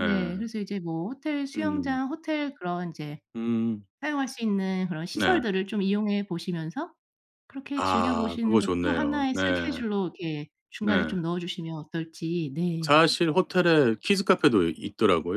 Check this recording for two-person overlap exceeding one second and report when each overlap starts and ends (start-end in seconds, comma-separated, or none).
7.8-9.4